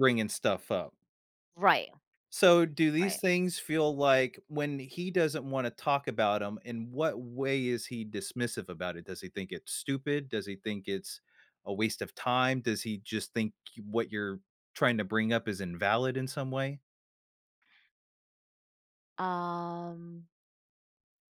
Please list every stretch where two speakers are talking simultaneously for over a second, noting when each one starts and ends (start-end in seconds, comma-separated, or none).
none